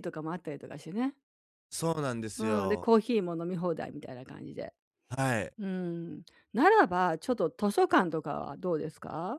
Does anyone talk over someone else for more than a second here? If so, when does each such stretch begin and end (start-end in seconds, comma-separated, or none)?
none